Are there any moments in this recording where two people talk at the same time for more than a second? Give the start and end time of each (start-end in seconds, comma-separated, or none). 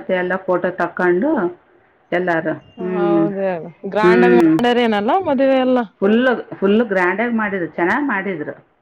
none